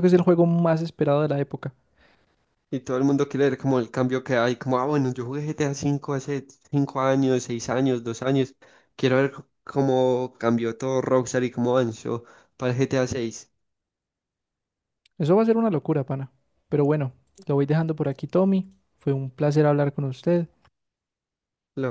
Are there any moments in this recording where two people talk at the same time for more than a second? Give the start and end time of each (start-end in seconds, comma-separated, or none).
none